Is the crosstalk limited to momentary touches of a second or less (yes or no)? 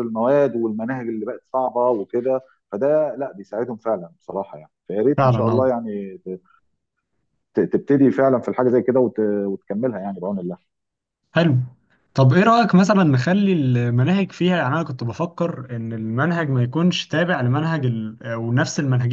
yes